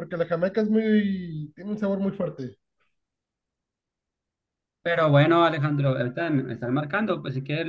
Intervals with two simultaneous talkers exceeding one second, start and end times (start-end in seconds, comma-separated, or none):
none